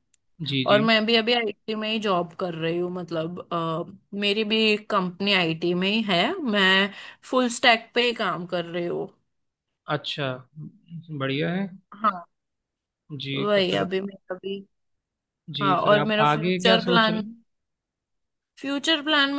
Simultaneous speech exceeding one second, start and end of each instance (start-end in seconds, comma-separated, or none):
15.6-17.2